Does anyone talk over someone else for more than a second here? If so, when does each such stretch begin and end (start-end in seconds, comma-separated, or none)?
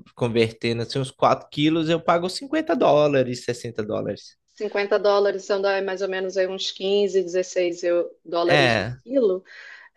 none